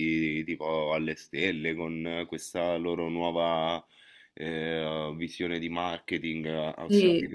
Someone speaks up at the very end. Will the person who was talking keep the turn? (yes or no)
yes